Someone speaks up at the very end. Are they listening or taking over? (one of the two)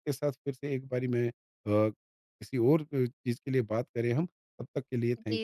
taking over